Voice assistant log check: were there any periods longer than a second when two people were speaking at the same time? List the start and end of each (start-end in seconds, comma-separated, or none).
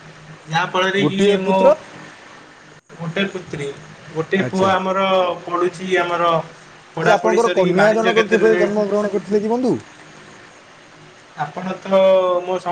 7.0-8.7